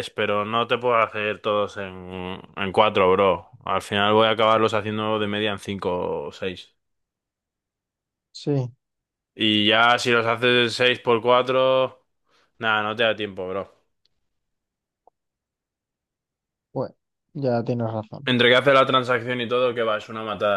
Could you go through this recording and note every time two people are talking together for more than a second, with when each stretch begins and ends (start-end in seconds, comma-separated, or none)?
none